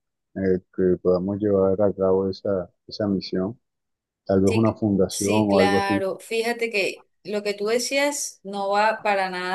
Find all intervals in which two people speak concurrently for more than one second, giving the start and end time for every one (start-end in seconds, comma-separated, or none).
4.5-6.0